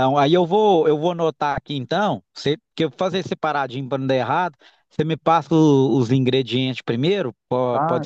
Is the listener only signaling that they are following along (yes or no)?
no